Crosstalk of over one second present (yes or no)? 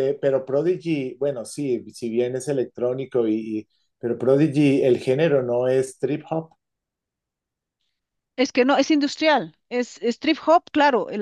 no